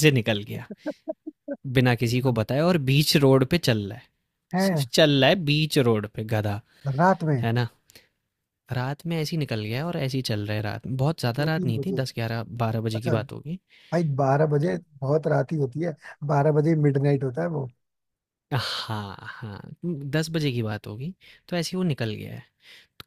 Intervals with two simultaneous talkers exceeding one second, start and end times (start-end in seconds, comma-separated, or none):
none